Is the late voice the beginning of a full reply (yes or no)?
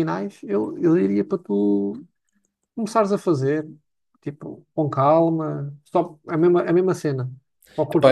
yes